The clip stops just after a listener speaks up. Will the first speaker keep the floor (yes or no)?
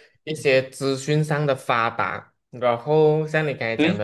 yes